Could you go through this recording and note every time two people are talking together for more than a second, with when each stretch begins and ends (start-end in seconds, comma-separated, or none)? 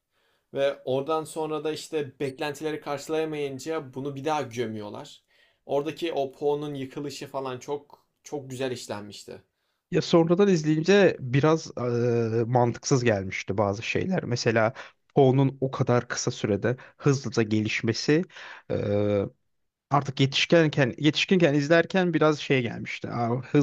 none